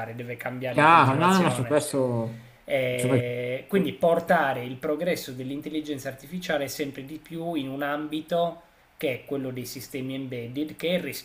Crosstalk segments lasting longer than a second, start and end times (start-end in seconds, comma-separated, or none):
0.7-1.9